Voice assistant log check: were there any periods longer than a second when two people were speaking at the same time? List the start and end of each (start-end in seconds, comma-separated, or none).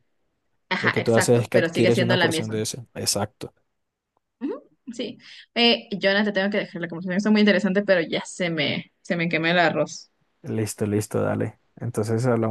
0.8-2.6